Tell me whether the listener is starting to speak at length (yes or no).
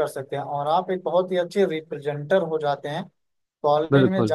no